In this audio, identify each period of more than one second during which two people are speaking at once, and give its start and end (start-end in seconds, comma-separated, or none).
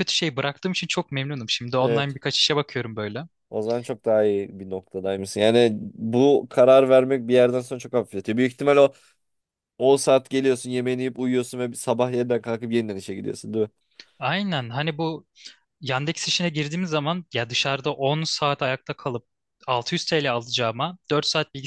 none